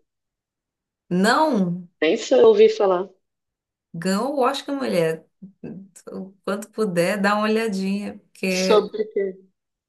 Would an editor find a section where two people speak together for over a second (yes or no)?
no